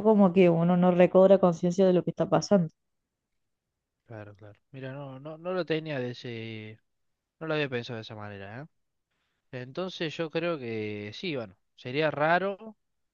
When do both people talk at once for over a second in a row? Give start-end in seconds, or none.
none